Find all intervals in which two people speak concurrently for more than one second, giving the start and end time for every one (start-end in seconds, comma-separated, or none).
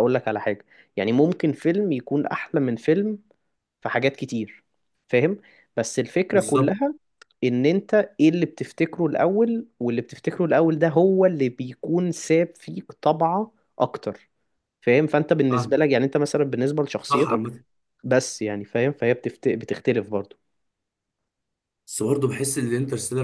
none